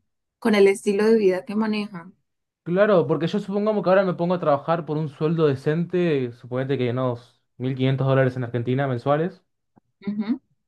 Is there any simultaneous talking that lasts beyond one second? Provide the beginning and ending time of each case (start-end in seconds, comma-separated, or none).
none